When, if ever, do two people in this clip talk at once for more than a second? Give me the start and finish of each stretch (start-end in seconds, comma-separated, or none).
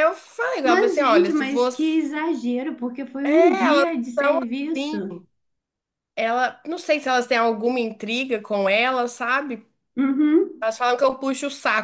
0.6-2.0, 3.2-5.2